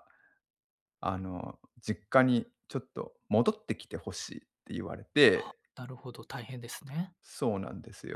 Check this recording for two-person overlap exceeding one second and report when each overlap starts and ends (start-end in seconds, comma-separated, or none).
none